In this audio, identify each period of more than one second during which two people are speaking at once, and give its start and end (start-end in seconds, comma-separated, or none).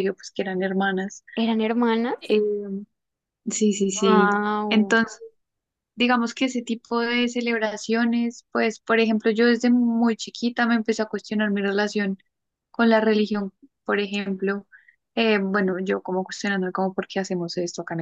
none